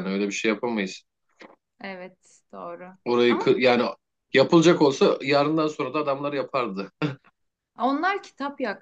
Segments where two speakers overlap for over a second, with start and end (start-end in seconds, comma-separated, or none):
none